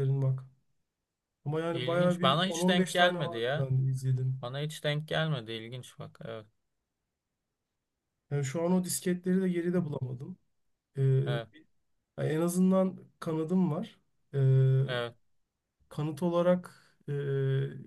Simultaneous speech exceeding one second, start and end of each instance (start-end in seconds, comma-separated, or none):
1.7-3.7